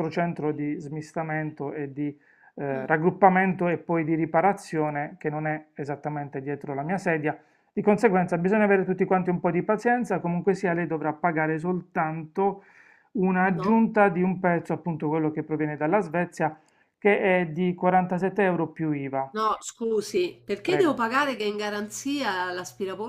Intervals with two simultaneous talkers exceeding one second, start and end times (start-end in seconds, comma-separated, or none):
none